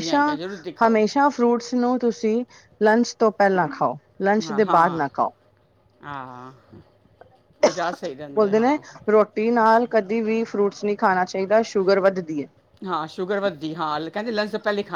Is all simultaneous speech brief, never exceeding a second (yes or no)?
yes